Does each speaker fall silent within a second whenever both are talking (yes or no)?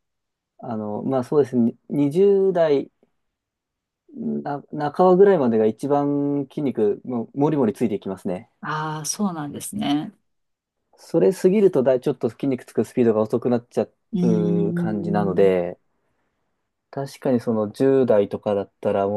no